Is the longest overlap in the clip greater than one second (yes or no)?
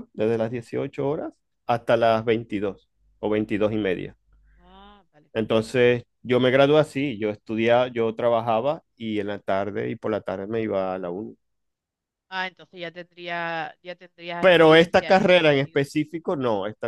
yes